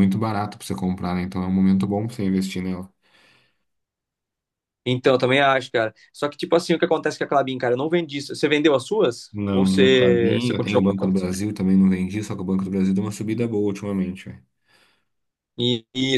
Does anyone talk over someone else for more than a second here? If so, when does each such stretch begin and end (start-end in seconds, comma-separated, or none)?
9.3-10.8